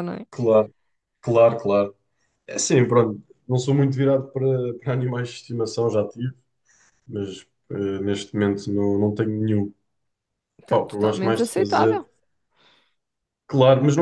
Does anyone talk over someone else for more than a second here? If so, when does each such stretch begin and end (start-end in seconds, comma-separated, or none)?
10.7-12.0